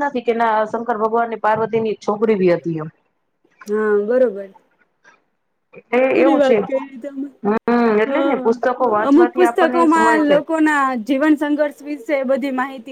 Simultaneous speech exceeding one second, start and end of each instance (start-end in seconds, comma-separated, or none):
8.1-10.3